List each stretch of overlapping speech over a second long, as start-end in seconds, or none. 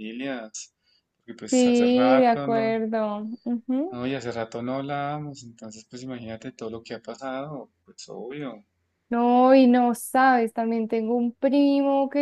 1.5-2.8